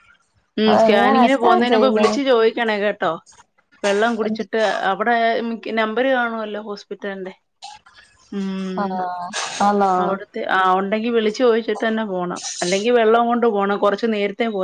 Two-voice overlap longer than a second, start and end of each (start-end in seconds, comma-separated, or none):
0.7-2.2